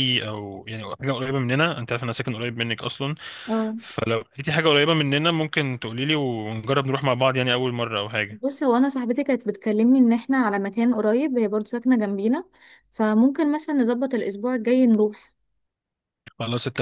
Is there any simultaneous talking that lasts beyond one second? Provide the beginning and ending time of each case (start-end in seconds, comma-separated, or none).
none